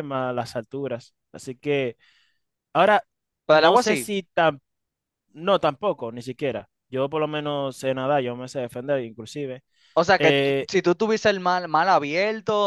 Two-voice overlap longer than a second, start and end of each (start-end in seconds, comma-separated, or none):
none